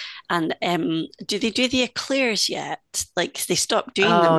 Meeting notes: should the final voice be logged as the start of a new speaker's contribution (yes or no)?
yes